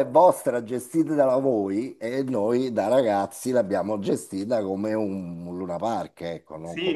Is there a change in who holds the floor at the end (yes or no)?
yes